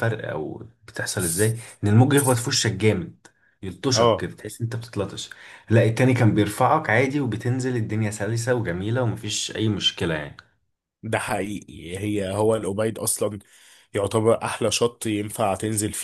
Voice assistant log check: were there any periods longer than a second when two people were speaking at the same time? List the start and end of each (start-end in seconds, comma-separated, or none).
none